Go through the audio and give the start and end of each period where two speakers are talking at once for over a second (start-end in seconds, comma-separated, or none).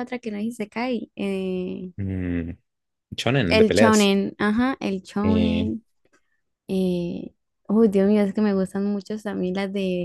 none